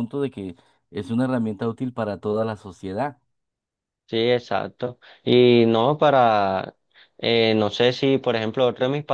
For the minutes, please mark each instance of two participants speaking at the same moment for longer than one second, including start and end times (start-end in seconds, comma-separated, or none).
none